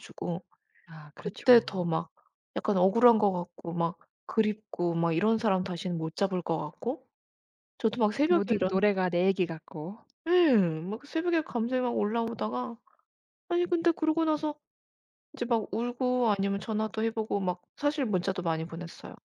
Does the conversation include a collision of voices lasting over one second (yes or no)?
no